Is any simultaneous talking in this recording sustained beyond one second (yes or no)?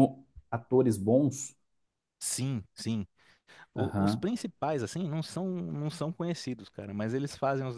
no